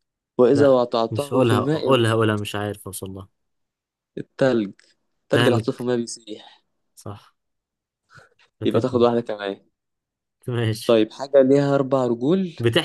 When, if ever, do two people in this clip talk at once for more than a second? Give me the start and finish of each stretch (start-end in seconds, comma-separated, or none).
0.5-2.2